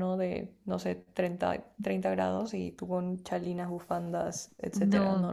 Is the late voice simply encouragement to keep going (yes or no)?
no